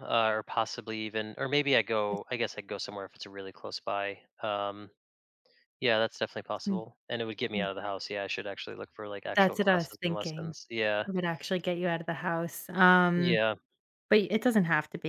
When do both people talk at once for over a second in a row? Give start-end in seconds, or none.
9.3-10.5